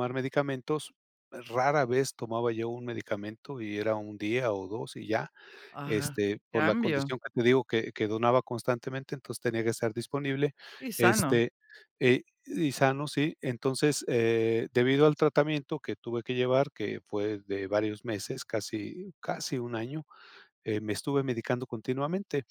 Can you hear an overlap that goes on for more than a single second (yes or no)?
yes